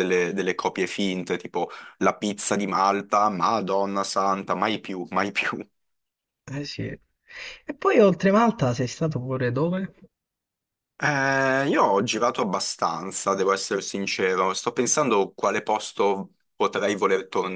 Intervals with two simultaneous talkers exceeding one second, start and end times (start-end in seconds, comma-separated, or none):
none